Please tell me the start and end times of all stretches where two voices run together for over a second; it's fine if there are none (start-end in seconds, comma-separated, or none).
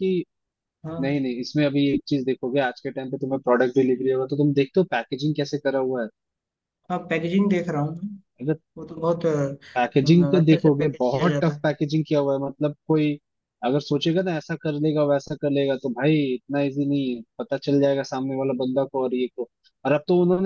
9.8-11.7